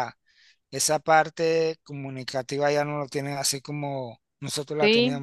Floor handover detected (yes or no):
yes